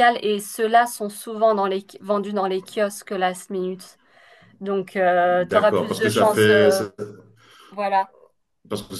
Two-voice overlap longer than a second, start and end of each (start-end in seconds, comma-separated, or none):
5.3-6.8